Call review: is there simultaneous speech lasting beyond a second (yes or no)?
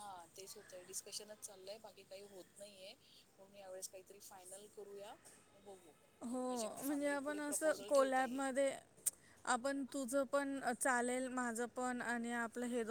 yes